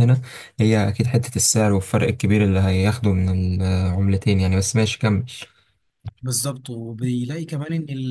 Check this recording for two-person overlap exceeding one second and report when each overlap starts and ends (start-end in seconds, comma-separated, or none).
none